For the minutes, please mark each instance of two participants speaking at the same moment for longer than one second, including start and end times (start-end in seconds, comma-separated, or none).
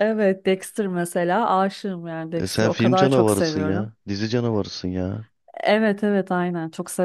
2.4-3.9